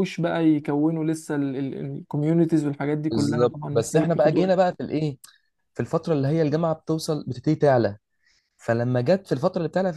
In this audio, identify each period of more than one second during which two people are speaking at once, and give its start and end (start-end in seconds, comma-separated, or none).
3.1-4.5